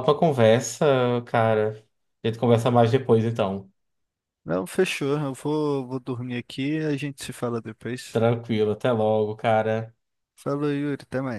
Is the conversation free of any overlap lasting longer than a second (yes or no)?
yes